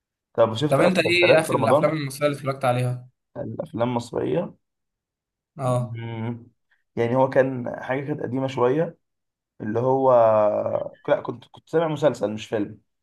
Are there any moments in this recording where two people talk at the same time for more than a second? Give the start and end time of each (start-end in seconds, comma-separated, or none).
0.7-1.9